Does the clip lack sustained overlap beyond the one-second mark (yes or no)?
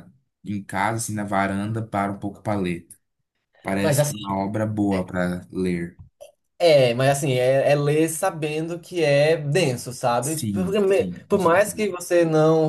no